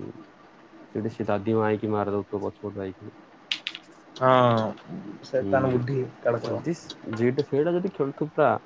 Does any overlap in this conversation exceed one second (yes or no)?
no